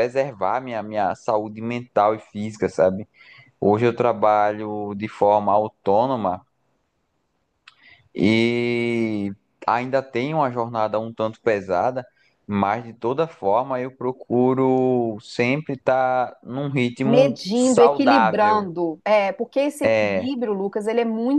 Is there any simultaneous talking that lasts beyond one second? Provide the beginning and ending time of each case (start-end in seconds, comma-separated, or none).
17.0-18.6